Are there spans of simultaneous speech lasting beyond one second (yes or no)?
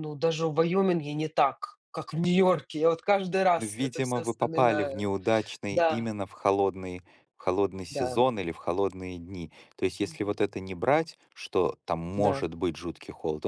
yes